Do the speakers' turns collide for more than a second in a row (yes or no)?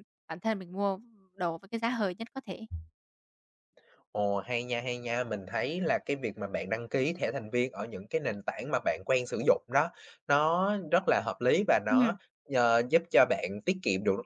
no